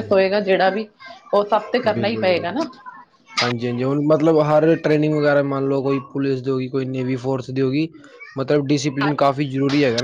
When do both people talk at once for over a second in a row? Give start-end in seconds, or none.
none